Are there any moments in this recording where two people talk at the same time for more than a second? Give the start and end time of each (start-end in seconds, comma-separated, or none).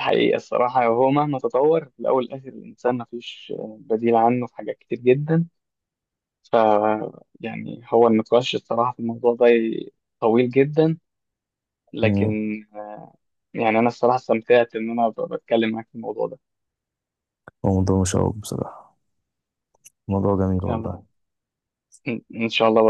none